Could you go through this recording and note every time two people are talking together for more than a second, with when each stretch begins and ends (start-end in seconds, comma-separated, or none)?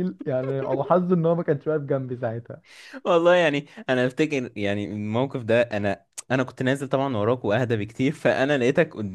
none